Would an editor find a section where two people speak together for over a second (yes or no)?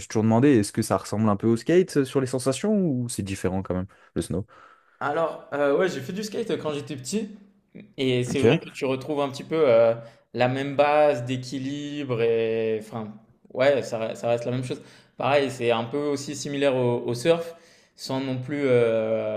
no